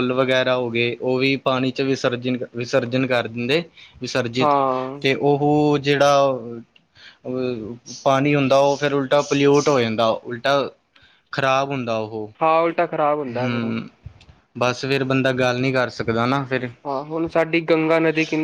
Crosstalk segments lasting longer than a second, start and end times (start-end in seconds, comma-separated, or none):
none